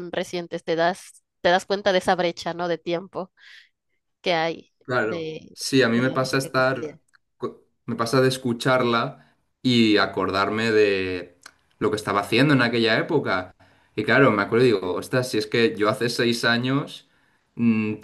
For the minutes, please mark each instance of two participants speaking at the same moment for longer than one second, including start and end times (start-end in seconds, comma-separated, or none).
4.8-7.0